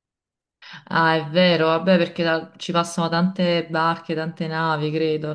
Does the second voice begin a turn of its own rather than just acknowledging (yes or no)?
yes